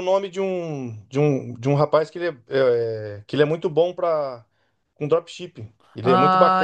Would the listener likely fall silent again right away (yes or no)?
no